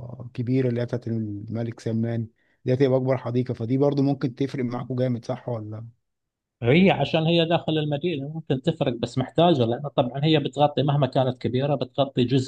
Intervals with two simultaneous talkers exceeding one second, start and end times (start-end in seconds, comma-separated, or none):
none